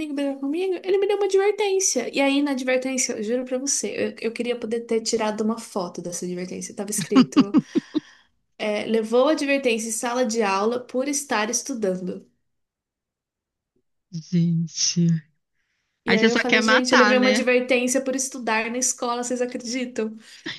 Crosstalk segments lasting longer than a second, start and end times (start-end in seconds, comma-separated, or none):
16.1-17.4